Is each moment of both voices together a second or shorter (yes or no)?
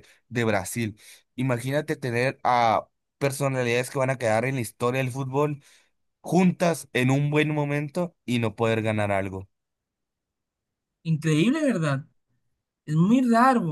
yes